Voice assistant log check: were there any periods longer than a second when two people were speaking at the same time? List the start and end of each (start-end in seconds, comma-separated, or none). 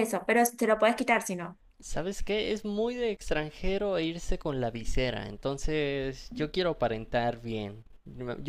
none